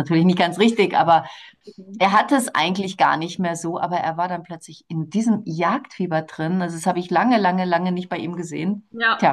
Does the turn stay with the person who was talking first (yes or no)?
yes